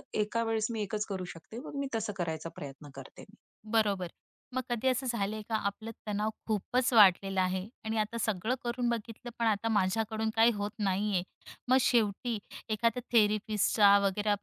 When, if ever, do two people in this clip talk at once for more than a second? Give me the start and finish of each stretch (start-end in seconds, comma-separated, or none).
none